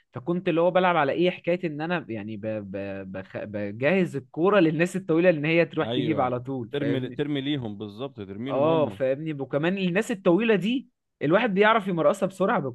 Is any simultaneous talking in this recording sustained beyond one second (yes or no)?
yes